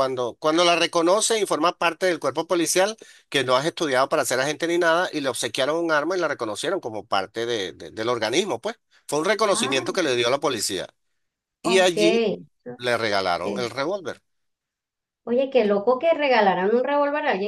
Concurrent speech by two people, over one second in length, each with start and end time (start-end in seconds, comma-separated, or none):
none